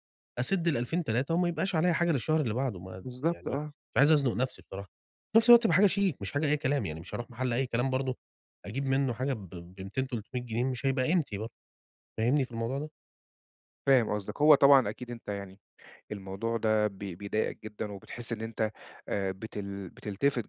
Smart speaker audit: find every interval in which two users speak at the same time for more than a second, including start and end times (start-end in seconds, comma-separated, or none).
none